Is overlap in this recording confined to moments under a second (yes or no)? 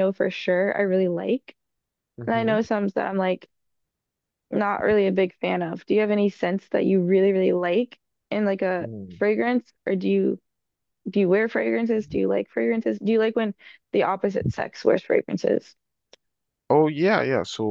yes